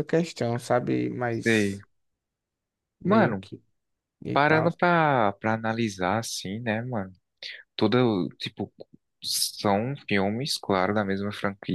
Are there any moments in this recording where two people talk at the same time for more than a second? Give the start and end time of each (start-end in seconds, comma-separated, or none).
none